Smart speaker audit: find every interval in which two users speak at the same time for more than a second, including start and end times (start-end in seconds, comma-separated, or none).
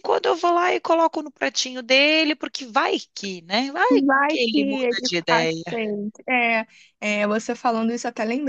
3.9-5.6